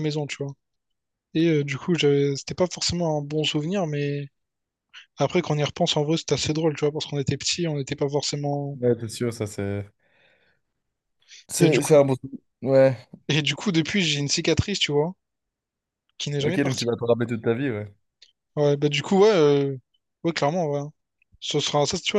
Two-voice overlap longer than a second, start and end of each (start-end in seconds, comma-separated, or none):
none